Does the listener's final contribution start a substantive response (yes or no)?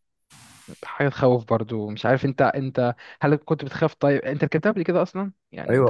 yes